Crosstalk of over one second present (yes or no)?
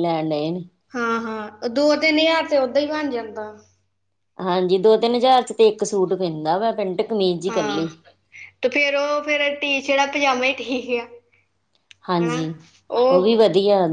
no